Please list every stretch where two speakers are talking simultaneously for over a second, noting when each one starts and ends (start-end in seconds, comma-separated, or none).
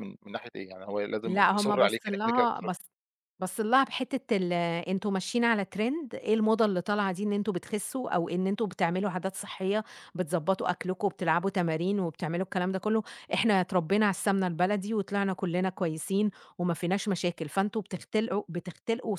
1.2-2.7